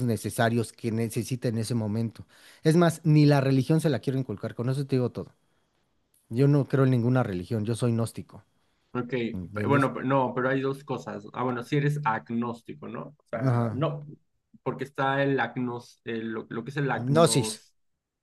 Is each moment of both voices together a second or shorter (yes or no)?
yes